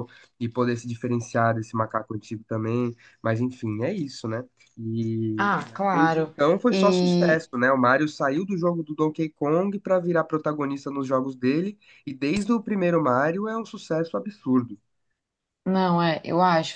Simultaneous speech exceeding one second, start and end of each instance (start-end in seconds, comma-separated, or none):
5.4-7.5